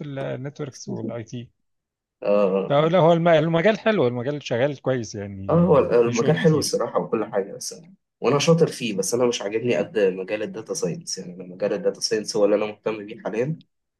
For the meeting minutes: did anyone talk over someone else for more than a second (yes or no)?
yes